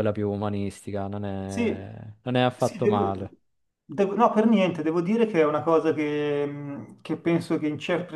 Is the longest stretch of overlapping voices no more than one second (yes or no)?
yes